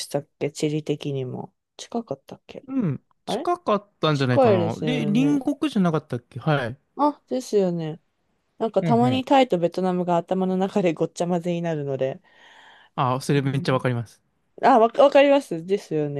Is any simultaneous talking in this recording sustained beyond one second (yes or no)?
yes